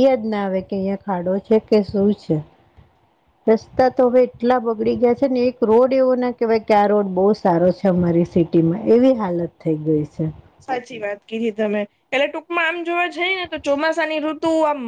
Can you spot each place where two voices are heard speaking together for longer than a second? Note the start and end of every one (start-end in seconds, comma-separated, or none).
none